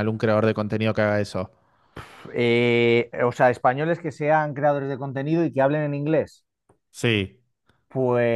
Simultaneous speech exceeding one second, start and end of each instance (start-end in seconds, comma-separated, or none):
none